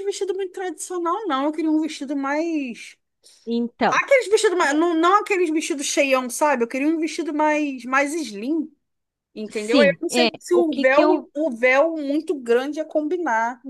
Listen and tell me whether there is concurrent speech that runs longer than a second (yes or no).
yes